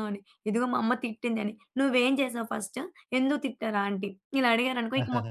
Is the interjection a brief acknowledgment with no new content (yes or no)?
no